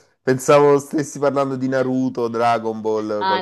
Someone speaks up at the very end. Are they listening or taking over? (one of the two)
taking over